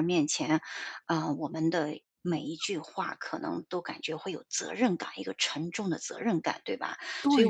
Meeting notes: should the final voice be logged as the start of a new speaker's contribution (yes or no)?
yes